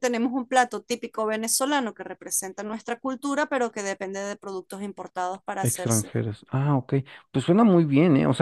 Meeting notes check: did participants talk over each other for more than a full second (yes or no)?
no